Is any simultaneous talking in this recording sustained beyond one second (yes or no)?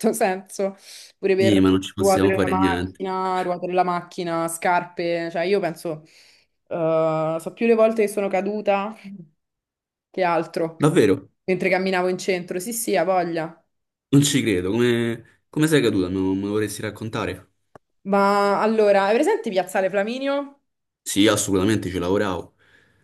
yes